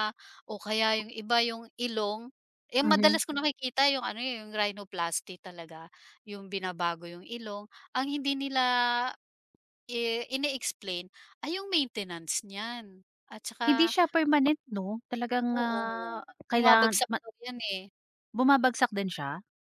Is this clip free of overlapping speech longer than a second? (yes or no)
no